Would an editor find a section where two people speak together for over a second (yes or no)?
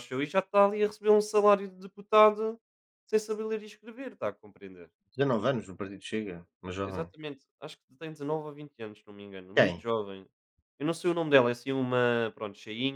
no